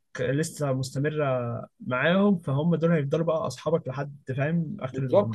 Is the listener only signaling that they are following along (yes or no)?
no